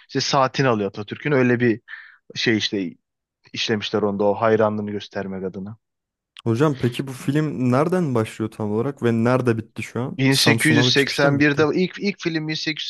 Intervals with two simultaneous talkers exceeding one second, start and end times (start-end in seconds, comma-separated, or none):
10.2-11.7